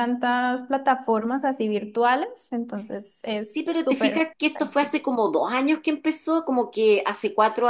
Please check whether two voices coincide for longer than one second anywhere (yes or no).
yes